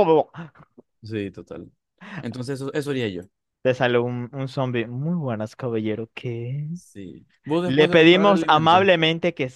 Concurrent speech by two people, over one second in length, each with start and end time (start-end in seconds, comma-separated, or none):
7.6-8.9